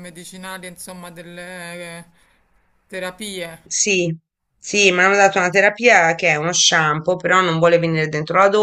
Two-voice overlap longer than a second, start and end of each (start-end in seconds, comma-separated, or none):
none